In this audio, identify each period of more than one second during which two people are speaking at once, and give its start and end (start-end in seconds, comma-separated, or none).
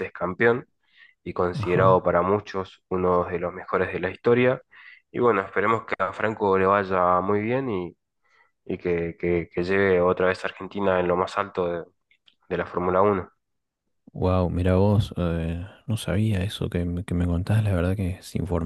none